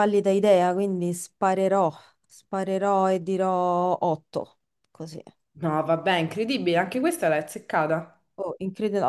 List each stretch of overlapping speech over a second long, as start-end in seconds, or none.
none